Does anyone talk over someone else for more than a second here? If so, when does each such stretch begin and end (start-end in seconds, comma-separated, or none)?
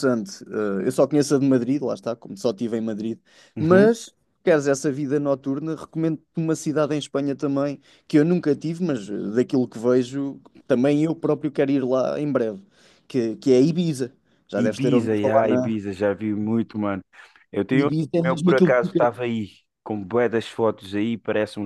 14.6-15.8, 17.7-19.2